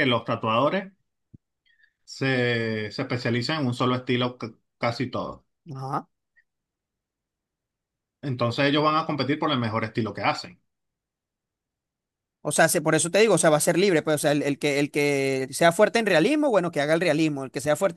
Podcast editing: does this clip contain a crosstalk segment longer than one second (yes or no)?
no